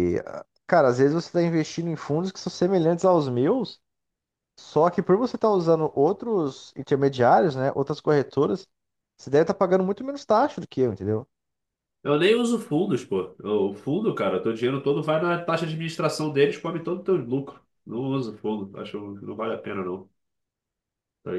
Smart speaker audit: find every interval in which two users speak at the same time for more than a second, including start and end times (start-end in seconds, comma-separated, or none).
none